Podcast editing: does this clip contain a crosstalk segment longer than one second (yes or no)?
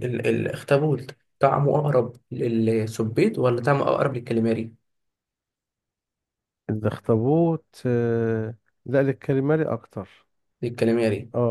no